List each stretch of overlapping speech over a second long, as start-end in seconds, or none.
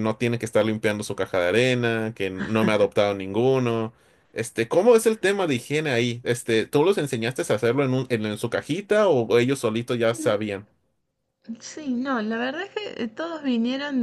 none